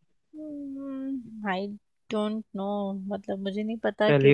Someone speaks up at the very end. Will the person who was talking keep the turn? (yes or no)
no